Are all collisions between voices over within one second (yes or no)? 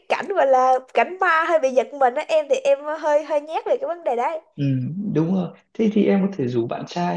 yes